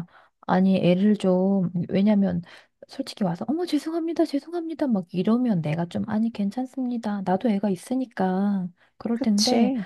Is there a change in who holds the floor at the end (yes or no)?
no